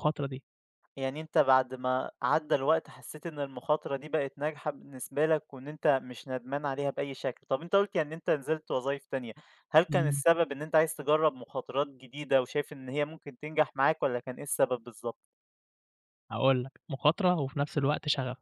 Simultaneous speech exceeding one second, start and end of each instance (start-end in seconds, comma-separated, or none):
none